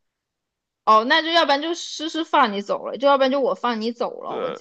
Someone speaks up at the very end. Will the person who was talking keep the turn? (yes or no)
no